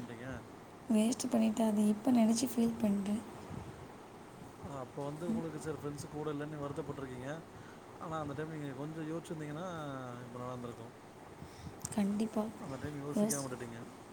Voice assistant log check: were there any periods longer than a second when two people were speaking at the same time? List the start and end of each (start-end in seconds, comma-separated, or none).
none